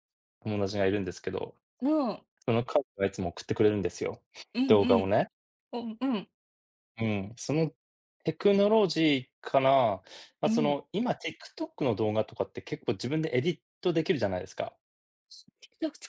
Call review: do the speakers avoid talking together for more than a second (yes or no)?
yes